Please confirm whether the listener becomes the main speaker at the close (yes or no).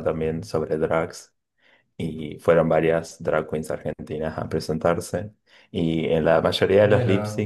no